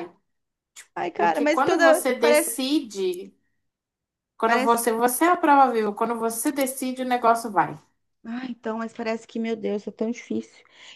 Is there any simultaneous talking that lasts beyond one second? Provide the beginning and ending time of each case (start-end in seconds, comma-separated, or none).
1.2-2.6